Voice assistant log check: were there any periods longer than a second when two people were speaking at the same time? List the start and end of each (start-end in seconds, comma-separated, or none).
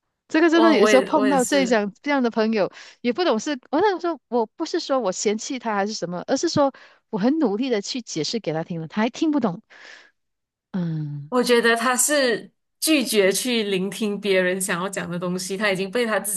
0.5-1.8